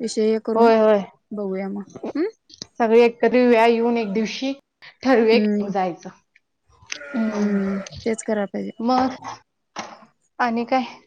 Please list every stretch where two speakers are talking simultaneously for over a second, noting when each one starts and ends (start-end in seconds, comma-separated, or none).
none